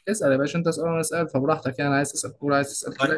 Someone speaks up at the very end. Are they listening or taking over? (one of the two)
taking over